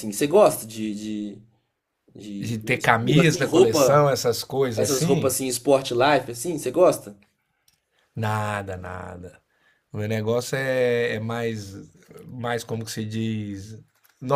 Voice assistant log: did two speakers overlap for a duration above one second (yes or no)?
yes